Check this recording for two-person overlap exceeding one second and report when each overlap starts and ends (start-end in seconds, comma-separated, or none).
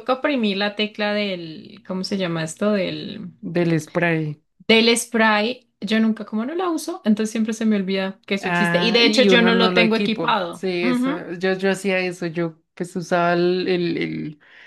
8.4-11.2